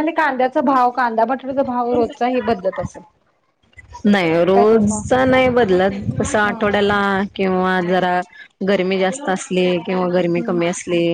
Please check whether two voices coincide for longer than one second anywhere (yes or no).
no